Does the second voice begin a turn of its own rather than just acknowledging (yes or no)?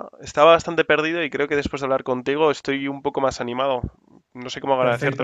yes